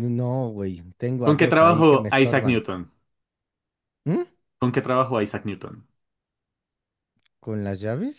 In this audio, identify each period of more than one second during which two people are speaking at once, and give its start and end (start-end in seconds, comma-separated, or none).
1.2-2.6